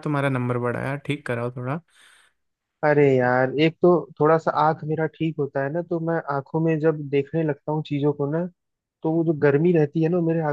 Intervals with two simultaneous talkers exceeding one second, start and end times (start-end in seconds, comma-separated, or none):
none